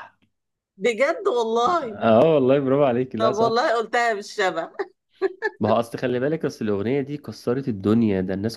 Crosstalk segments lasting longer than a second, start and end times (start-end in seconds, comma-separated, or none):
none